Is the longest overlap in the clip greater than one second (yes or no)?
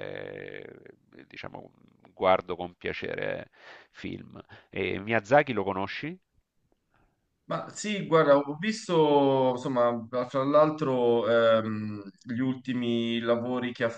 no